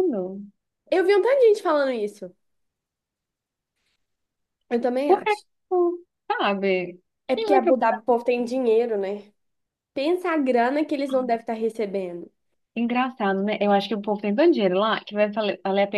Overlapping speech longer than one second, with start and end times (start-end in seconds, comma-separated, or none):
none